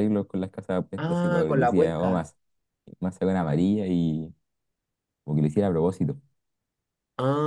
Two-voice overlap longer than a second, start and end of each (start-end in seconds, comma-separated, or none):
1.0-2.3